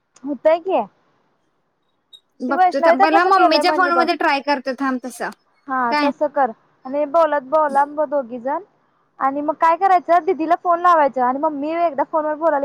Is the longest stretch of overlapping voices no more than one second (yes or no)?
no